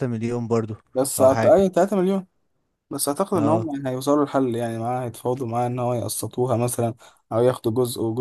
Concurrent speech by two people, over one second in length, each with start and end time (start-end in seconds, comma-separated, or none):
none